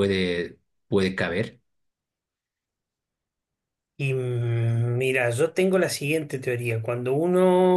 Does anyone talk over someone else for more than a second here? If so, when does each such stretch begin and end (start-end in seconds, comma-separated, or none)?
none